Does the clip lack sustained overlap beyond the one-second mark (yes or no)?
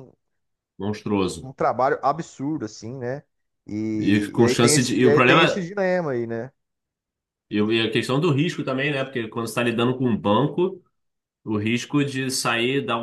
no